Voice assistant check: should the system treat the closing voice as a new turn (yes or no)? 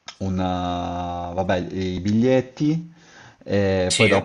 no